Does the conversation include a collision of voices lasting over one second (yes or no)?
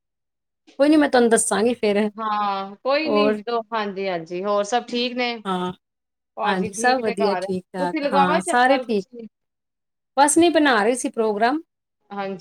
yes